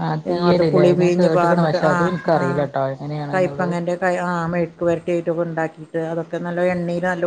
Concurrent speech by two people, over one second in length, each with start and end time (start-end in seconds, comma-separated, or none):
0.7-2.6